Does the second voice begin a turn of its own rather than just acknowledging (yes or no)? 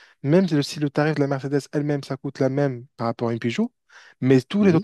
no